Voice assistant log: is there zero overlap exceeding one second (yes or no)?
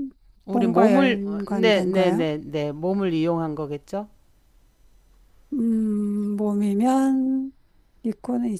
no